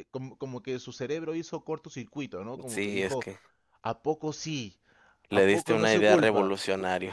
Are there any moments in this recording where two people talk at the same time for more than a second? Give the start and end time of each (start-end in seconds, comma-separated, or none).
5.3-6.6